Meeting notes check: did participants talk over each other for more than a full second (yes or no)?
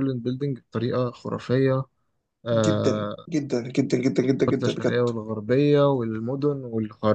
no